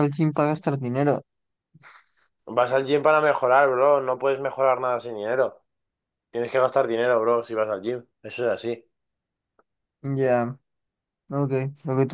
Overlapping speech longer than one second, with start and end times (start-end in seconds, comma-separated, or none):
none